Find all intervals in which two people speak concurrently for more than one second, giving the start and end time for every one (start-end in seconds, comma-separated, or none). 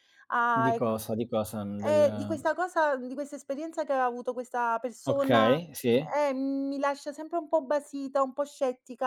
none